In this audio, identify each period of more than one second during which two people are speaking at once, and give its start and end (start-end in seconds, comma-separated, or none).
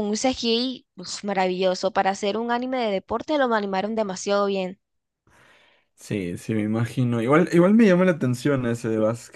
none